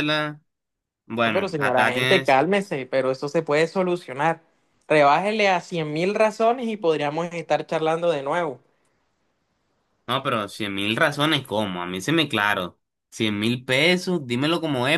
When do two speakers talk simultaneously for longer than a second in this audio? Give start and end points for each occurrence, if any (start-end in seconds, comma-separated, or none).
1.3-2.5